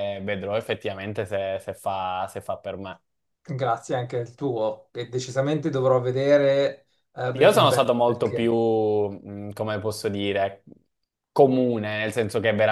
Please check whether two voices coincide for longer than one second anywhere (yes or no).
yes